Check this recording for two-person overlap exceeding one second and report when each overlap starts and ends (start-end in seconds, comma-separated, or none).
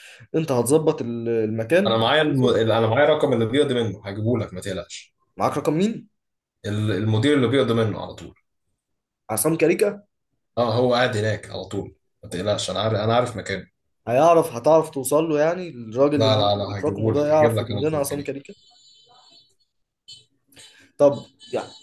16.1-18.4